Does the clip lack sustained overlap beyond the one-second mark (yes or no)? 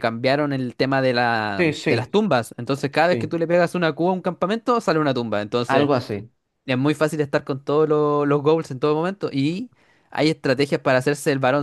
yes